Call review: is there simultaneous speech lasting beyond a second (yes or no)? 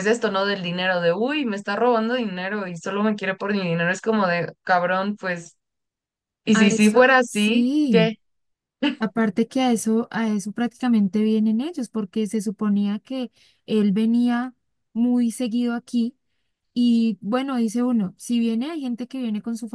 yes